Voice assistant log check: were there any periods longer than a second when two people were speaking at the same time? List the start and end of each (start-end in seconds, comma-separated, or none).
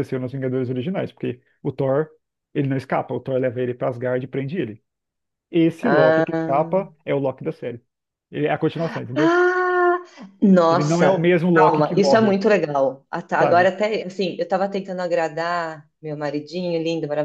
10.7-12.4